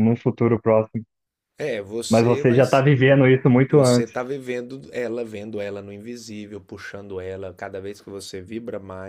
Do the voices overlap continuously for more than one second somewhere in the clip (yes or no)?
no